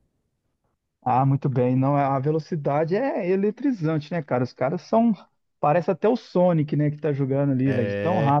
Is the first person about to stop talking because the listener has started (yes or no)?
no